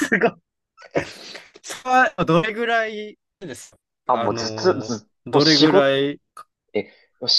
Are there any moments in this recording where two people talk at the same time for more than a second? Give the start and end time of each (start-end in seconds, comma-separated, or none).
4.1-6.0